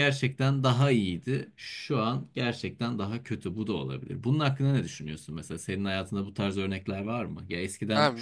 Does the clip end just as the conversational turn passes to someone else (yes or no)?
yes